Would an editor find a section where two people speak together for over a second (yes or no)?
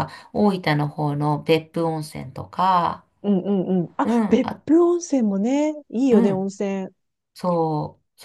no